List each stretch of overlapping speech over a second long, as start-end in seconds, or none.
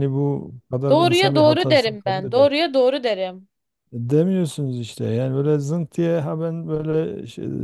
0.9-2.5